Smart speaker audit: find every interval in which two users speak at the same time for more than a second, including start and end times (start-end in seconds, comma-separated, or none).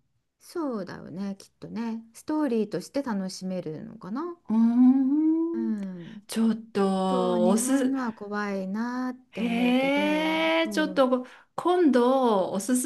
6.7-8.0, 9.3-11.1